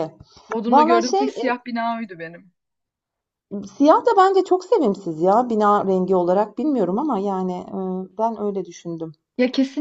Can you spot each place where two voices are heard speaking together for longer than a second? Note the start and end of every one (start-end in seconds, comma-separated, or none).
none